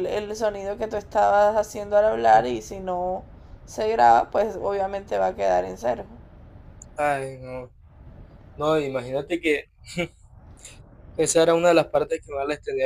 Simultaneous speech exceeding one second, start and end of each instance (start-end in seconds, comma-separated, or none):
none